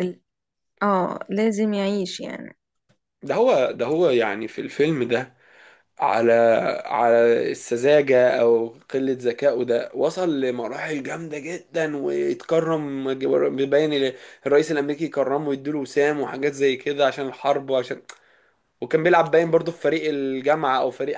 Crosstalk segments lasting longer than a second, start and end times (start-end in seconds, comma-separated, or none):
none